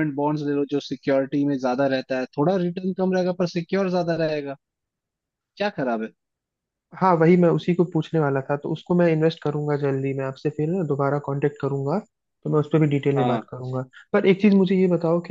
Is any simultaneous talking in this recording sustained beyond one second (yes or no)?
no